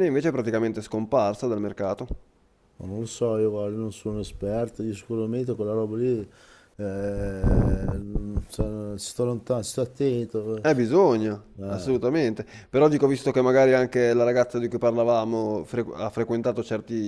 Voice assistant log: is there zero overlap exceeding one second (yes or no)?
yes